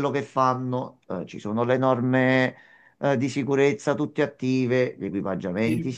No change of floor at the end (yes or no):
yes